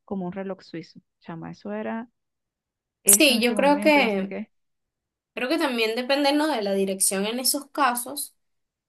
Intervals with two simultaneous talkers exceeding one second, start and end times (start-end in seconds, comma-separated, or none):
3.1-4.3